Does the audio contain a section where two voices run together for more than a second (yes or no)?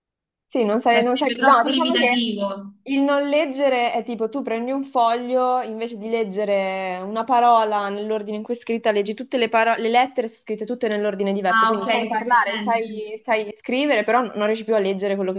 yes